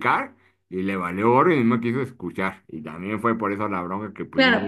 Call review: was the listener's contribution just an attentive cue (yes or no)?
no